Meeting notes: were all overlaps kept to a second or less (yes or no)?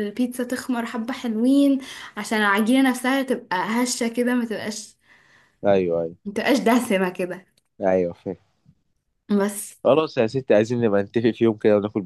yes